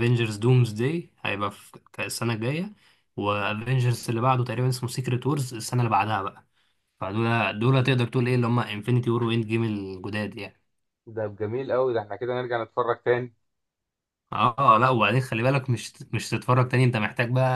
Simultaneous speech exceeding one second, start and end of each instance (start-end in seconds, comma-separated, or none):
none